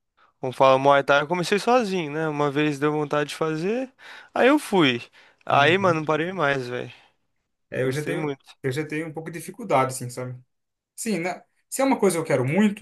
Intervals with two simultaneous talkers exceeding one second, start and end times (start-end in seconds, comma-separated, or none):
none